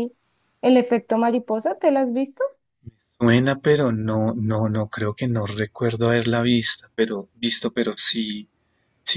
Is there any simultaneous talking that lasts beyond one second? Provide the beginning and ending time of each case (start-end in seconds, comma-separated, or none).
none